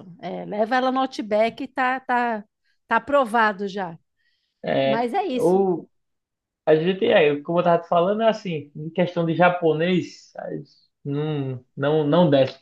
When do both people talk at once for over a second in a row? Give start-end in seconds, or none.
none